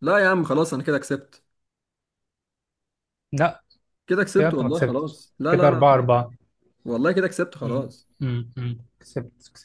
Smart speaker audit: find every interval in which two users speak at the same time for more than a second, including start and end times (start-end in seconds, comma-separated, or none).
4.4-5.8